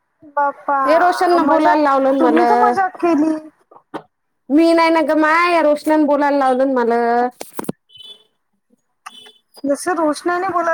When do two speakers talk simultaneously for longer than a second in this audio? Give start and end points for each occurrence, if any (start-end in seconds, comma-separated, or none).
0.9-2.5